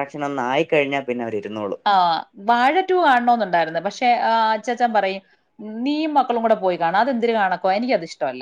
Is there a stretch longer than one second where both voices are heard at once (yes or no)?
no